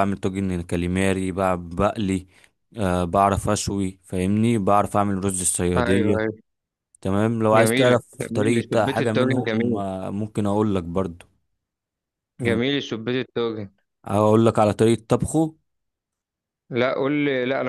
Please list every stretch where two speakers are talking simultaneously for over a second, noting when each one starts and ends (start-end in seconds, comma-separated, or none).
7.5-9.8